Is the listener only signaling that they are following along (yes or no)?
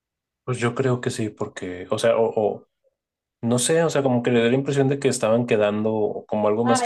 yes